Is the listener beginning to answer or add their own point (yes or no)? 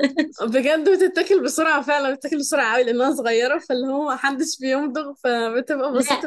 yes